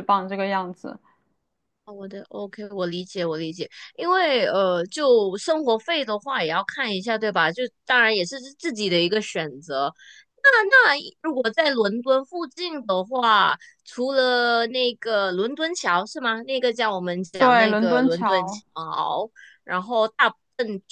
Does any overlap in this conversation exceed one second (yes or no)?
yes